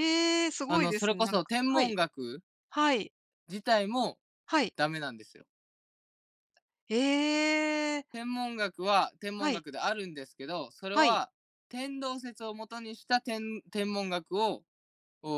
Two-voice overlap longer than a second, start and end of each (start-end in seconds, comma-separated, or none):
0.7-2.0